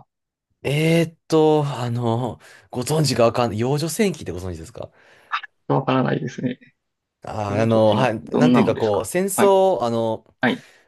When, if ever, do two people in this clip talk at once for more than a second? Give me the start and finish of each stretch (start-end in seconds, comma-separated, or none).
7.5-9.5